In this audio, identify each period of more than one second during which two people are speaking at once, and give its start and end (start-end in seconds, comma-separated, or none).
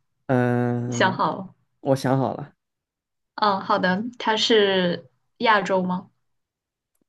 none